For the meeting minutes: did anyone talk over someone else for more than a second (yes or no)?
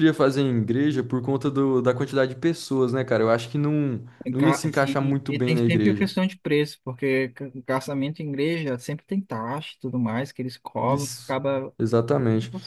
yes